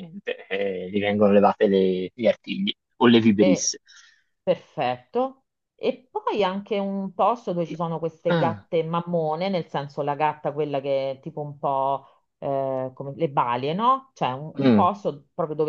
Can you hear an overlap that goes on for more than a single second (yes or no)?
no